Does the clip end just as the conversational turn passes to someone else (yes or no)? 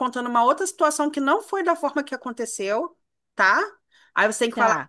no